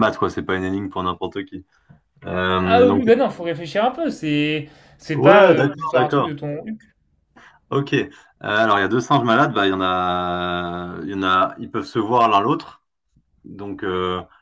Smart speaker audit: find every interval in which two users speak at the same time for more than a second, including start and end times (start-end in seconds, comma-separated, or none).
5.1-6.3